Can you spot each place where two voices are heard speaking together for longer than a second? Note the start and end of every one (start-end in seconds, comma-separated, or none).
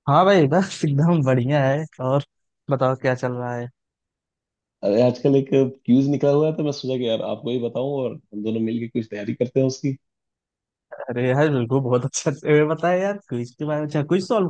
none